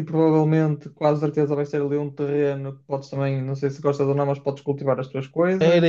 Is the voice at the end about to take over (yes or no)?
yes